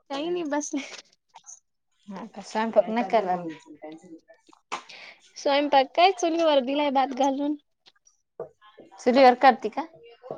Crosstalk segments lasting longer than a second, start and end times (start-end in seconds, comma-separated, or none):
none